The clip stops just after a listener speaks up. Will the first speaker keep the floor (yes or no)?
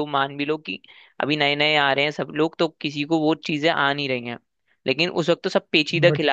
yes